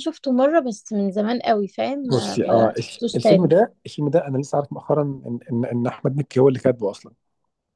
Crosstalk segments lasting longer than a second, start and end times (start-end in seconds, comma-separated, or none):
2.0-3.5